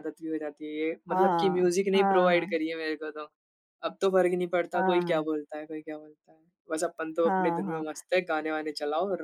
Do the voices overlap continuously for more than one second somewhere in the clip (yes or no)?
yes